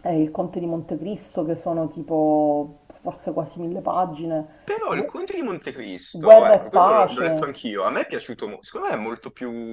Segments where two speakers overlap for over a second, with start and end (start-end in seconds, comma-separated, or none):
6.1-7.5